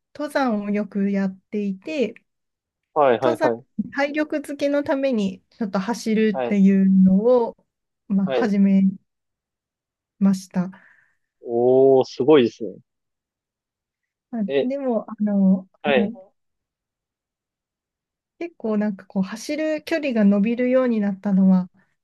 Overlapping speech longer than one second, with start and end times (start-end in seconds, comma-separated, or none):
none